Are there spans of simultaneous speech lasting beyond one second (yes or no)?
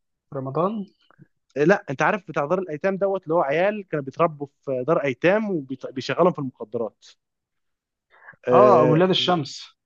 no